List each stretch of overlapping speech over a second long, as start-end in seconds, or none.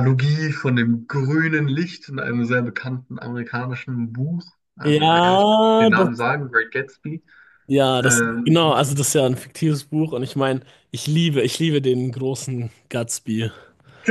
4.8-6.2